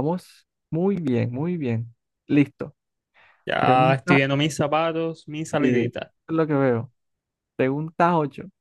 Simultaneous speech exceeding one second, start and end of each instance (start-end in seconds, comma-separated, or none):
none